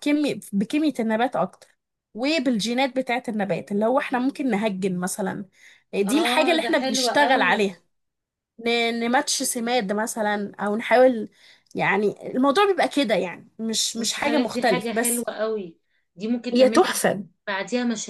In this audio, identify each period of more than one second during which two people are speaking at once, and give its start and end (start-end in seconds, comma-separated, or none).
6.0-7.7, 14.0-15.2